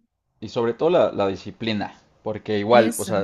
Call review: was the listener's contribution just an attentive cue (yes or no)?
yes